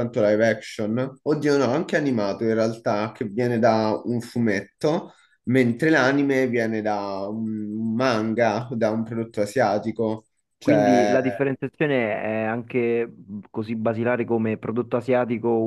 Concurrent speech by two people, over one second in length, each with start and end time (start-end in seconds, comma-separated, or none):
none